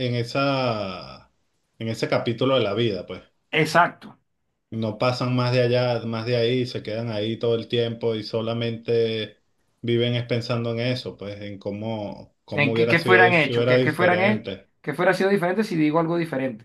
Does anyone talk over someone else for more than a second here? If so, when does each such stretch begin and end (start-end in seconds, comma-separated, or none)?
12.6-14.5